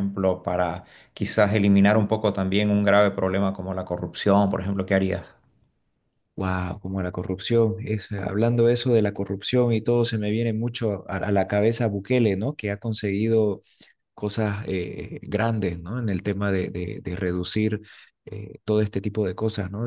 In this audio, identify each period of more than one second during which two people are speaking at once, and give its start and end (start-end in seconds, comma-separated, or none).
none